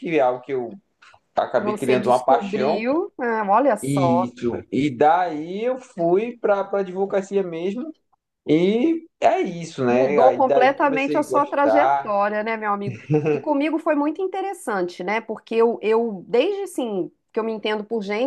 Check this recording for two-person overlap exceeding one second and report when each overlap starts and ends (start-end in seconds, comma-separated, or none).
1.6-2.9, 9.9-12.2